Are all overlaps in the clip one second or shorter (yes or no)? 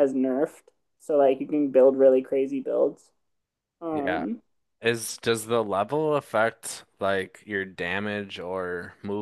yes